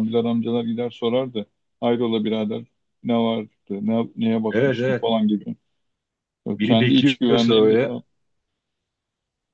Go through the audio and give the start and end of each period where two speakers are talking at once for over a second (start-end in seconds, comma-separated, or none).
6.6-8.0